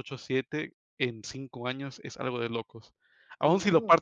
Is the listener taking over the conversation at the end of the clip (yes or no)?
no